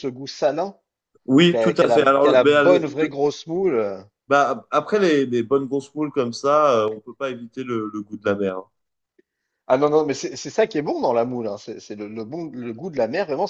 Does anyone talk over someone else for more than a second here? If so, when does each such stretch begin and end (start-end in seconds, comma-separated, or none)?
1.5-3.2